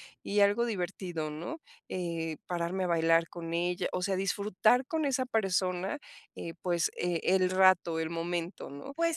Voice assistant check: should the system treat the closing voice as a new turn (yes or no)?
yes